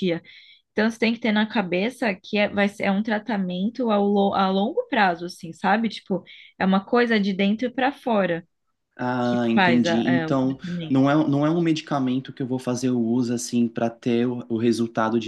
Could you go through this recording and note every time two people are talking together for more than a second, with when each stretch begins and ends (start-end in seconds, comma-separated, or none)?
9.2-11.0